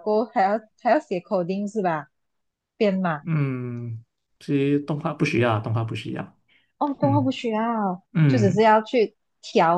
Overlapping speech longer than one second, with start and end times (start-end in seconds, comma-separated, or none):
none